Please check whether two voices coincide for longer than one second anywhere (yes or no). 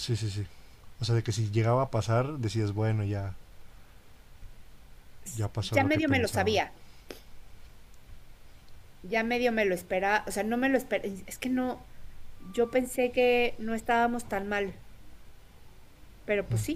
yes